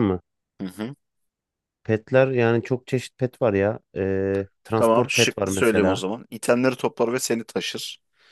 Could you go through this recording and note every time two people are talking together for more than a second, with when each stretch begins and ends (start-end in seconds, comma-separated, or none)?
4.7-6.0